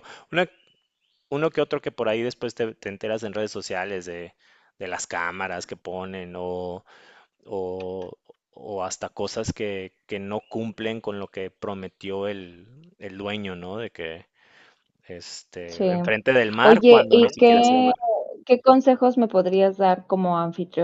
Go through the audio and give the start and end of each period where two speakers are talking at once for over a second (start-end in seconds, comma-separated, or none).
16.6-17.9